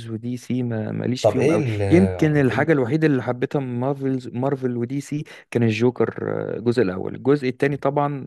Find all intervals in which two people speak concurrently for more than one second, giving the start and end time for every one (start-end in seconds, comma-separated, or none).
1.2-2.8